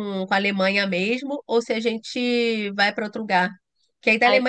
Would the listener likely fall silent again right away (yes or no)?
yes